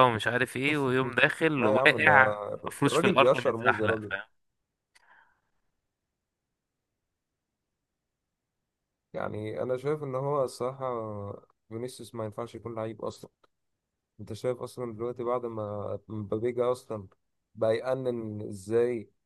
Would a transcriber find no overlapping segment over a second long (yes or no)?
no